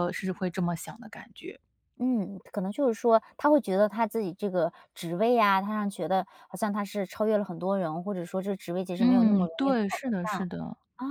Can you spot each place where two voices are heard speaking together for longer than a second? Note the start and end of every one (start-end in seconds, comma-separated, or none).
9.0-10.5